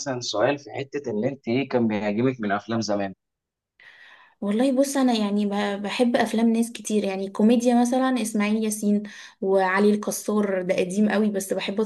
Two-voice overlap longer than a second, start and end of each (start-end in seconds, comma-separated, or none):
none